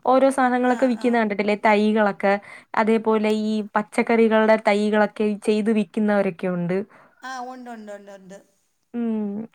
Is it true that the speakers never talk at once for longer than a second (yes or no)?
yes